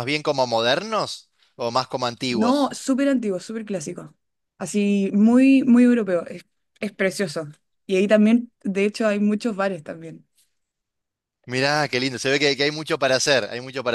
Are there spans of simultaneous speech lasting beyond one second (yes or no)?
no